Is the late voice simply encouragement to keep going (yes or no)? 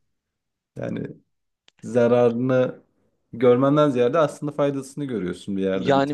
no